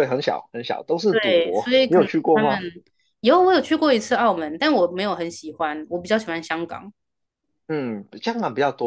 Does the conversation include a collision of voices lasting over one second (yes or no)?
yes